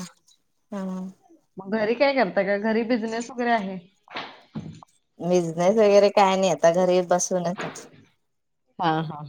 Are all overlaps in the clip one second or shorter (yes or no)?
yes